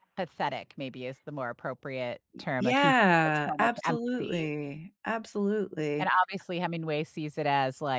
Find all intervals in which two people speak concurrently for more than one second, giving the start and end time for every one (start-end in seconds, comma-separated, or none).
2.6-4.5